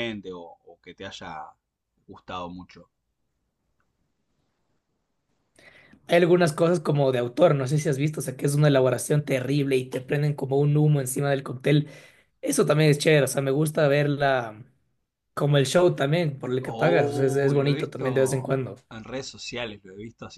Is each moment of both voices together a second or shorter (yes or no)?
no